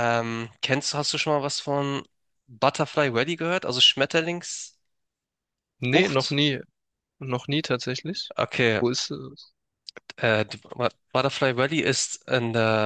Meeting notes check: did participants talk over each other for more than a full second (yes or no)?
no